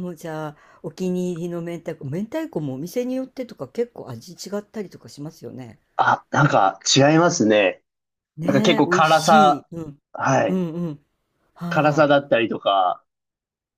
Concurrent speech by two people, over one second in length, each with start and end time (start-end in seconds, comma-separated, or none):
8.4-9.7